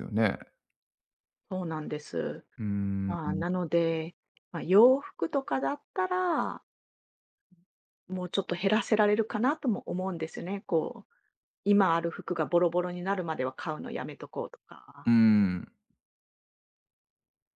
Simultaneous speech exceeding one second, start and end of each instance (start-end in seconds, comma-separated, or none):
none